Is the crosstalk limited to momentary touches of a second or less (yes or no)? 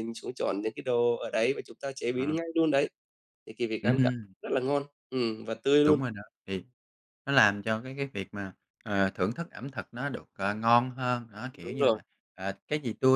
yes